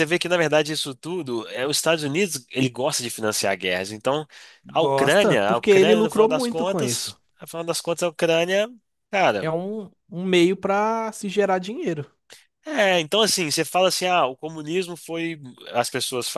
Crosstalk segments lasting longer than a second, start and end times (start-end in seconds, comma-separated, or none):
4.7-7.2